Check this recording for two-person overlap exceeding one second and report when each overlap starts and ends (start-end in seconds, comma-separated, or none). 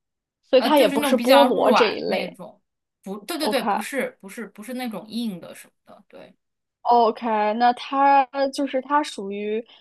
0.6-2.4